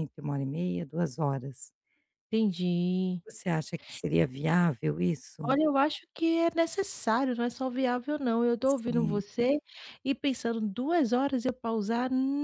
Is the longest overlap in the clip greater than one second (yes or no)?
no